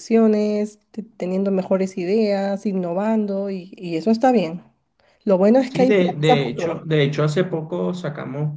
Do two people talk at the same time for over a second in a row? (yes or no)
yes